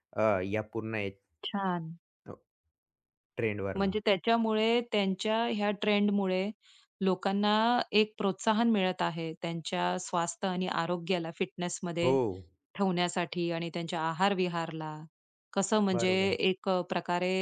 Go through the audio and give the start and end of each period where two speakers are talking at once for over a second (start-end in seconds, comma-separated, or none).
none